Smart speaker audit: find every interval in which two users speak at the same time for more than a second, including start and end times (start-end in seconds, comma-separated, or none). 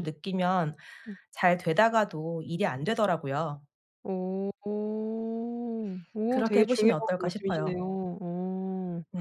6.3-7.8